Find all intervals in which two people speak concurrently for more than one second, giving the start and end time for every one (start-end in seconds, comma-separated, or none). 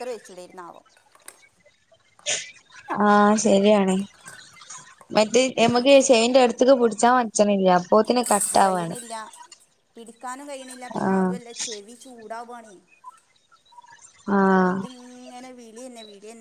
none